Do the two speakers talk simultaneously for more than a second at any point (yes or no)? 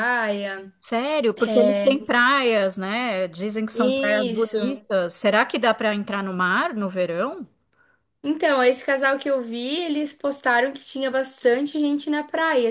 no